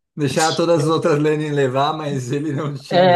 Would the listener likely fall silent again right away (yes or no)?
no